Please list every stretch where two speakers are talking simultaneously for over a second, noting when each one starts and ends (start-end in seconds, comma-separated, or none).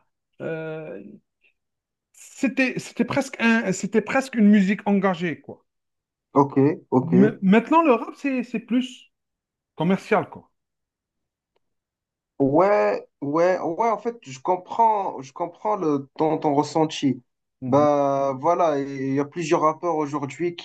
none